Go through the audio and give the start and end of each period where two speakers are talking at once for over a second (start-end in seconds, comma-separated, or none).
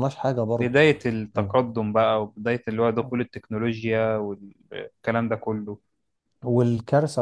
none